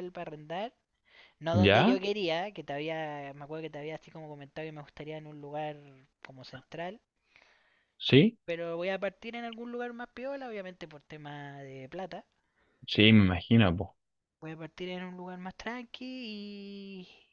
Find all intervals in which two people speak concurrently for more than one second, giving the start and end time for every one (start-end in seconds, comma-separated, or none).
none